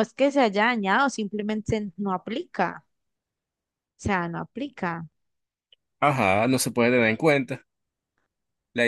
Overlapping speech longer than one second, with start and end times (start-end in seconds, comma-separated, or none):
none